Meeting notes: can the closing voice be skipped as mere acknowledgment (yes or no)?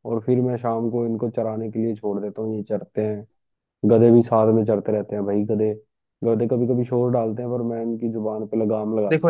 no